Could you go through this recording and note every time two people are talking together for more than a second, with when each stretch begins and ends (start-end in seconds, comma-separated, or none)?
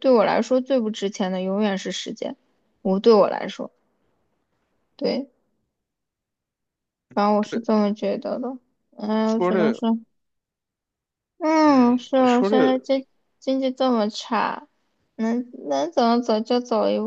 11.6-12.9